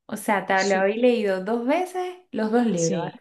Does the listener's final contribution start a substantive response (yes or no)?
yes